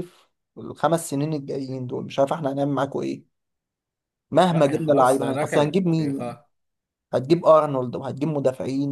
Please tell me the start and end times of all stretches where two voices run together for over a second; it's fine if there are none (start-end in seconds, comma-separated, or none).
4.5-6.4